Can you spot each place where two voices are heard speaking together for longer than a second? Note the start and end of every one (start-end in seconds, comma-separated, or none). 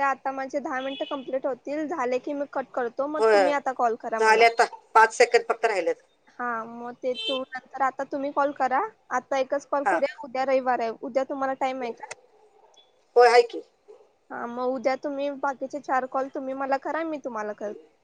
none